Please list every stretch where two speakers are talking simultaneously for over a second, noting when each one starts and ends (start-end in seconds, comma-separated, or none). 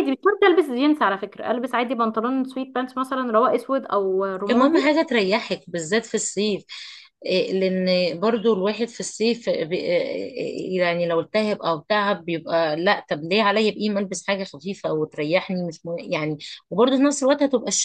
none